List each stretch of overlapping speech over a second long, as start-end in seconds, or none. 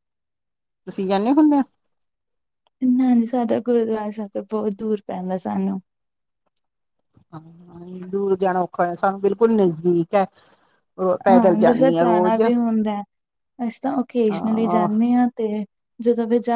none